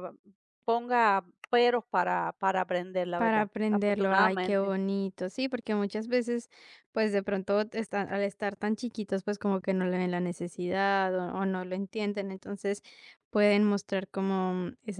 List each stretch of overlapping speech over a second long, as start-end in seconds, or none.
3.1-4.7